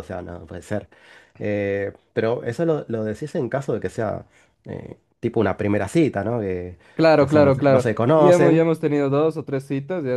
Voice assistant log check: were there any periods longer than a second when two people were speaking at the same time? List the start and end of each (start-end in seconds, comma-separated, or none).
7.1-8.6